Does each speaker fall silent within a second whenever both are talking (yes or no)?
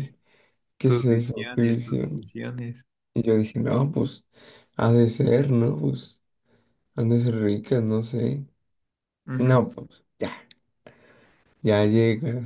no